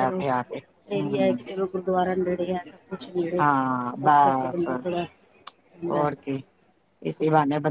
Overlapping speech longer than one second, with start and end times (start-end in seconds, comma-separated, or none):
3.4-4.7